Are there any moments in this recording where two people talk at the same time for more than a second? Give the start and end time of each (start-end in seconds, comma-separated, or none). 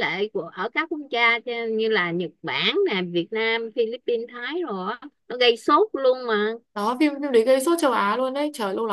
none